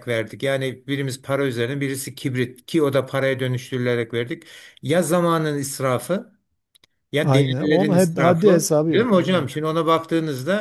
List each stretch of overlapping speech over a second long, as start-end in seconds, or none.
7.2-9.5